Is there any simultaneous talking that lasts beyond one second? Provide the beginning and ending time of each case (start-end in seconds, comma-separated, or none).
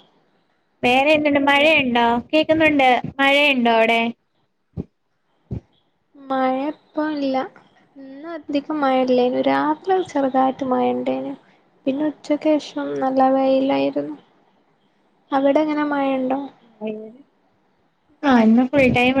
none